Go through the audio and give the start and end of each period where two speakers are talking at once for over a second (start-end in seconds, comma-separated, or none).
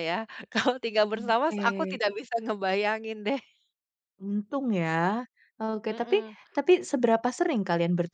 none